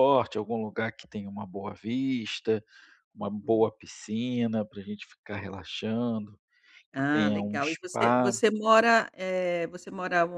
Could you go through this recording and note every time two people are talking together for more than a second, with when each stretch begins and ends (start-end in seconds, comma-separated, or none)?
6.9-8.4